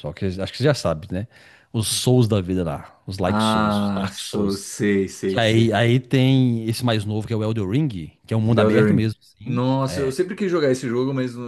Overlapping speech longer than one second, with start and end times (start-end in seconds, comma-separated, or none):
3.3-4.6, 8.5-10.1